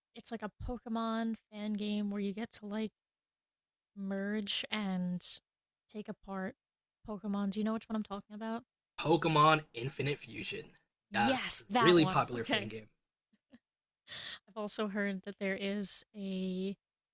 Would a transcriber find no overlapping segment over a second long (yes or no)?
no